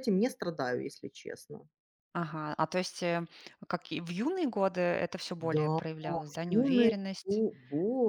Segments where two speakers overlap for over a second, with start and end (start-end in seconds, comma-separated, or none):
5.4-7.4